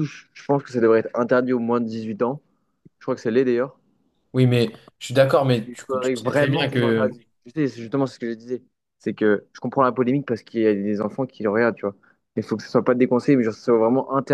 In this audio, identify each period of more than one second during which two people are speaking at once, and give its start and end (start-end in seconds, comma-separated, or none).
5.7-7.2